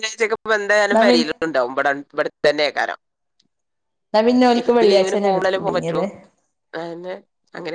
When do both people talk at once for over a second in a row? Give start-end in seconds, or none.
4.6-6.0